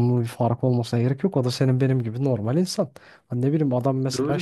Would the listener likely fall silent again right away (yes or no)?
yes